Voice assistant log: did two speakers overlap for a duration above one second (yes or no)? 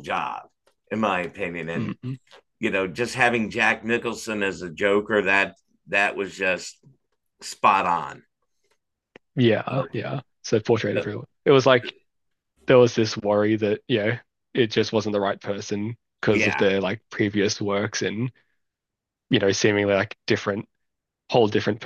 no